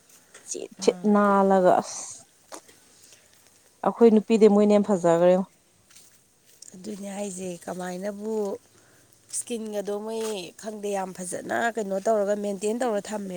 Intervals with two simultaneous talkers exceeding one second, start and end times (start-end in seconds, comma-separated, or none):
none